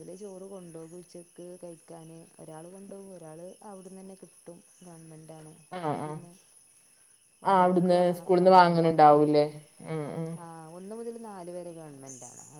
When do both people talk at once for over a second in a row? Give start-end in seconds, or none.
7.5-9.3